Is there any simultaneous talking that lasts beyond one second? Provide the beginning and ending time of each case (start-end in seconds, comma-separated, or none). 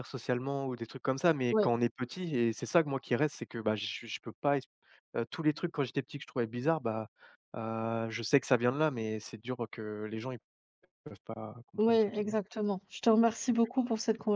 none